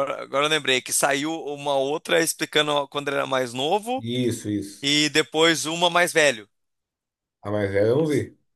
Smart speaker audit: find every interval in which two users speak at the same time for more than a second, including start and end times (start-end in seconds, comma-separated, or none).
none